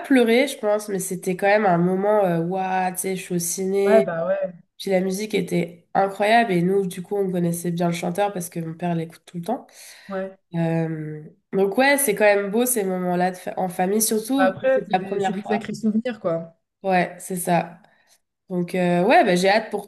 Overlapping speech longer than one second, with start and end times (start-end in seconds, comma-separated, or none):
14.4-15.7